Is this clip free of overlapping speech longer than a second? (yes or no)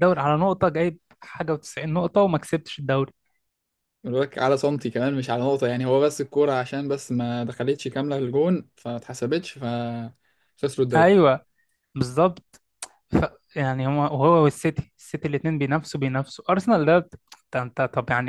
yes